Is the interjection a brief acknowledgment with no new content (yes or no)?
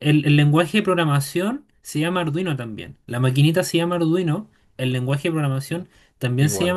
yes